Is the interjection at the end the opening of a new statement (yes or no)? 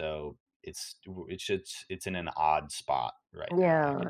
yes